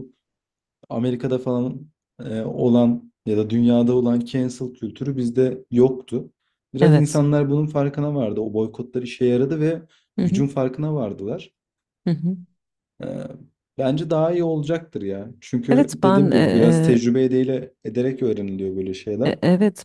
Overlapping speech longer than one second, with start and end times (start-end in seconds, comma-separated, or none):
15.7-17.0